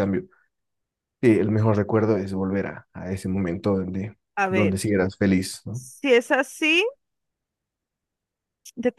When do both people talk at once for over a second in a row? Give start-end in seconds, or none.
none